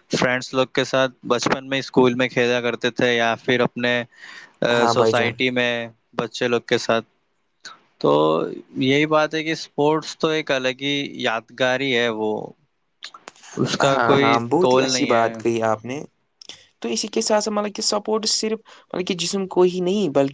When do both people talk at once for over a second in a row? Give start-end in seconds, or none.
13.9-15.6